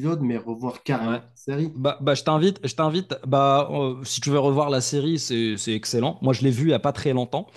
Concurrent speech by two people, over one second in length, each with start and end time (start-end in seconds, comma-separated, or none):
none